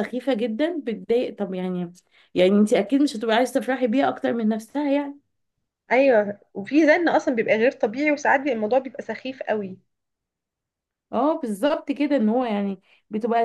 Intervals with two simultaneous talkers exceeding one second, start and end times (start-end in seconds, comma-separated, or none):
none